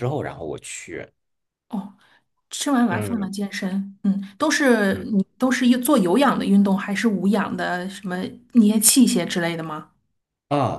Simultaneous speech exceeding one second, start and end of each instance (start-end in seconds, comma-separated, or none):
none